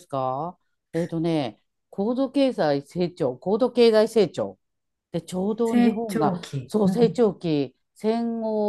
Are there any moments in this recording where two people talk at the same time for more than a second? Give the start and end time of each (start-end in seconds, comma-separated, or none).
5.7-7.2